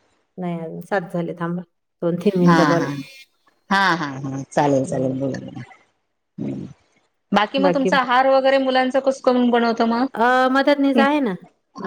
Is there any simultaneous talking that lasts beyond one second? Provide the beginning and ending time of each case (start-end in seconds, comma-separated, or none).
none